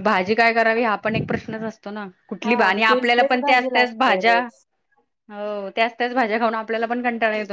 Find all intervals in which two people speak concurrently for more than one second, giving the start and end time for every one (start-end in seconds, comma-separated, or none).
2.4-4.4